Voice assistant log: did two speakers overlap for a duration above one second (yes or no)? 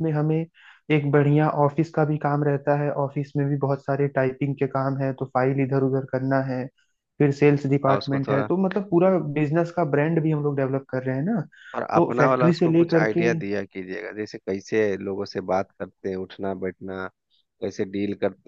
yes